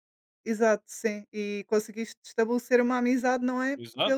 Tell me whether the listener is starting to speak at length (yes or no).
yes